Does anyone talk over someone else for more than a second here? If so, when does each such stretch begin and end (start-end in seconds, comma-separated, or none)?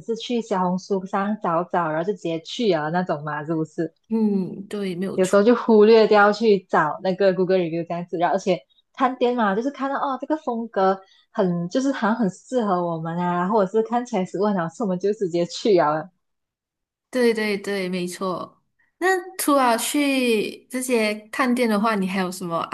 none